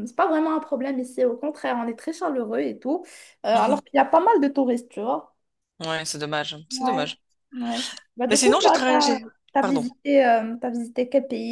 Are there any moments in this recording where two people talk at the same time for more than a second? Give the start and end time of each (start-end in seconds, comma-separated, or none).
8.3-9.8